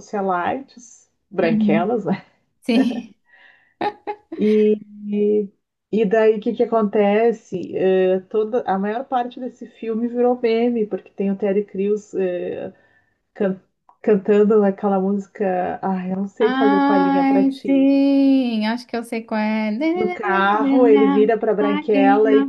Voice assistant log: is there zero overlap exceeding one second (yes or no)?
no